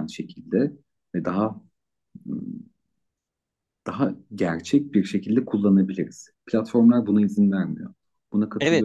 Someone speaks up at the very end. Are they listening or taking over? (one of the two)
taking over